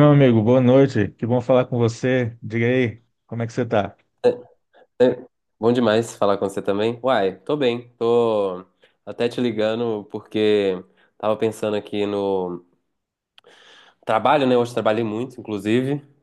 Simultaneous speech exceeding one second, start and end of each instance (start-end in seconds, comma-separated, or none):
none